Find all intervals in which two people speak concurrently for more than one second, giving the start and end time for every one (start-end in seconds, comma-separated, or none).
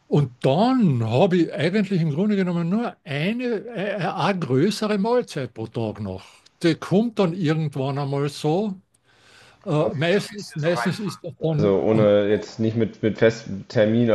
9.7-11.8